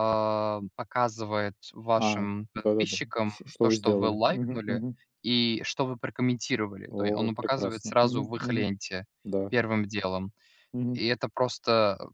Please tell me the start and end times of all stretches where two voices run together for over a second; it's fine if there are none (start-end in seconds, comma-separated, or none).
2.0-4.8, 6.9-8.7